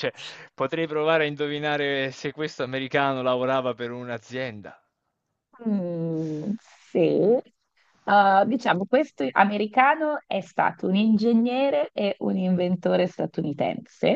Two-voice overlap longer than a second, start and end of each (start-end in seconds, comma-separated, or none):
none